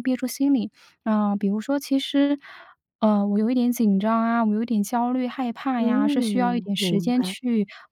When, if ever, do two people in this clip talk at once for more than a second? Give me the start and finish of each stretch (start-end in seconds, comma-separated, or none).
5.8-7.3